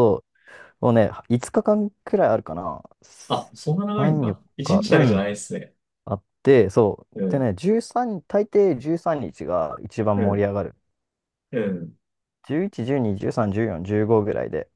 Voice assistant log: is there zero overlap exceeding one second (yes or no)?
no